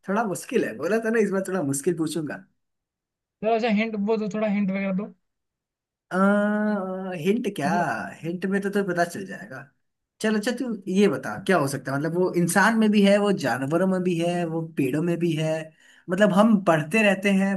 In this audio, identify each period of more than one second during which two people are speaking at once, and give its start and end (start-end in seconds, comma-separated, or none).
none